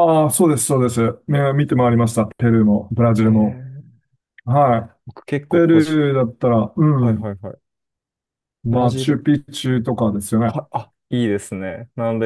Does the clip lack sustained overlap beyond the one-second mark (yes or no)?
yes